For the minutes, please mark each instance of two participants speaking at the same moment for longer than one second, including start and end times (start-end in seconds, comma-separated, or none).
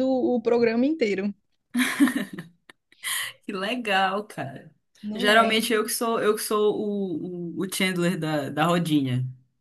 none